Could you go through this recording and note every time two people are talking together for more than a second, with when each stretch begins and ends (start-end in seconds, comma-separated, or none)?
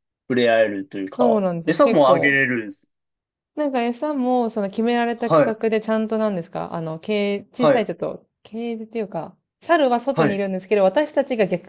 1.1-2.4